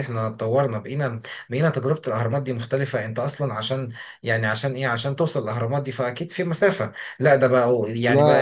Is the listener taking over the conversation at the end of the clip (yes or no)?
no